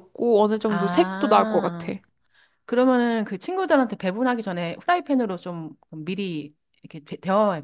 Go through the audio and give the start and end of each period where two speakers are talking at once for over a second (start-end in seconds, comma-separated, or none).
0.7-1.9